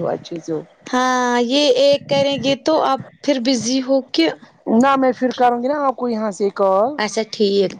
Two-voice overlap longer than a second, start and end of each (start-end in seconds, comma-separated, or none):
none